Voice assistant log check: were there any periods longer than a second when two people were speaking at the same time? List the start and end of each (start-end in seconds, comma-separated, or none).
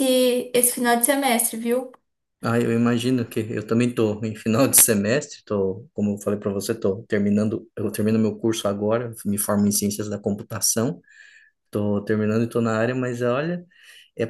none